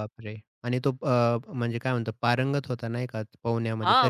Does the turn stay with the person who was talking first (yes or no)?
no